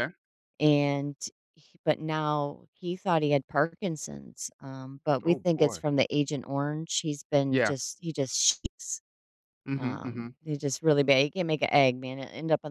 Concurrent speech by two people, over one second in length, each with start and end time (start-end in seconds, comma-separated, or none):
none